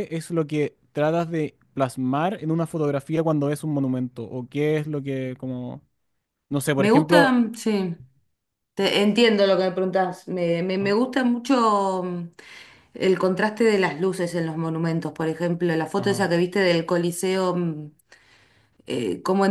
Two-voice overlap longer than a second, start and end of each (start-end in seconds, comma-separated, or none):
none